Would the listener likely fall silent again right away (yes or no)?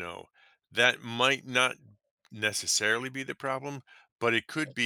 yes